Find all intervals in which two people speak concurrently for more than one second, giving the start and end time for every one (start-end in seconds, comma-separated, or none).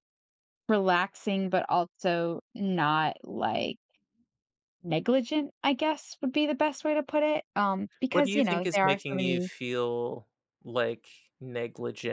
8.1-9.5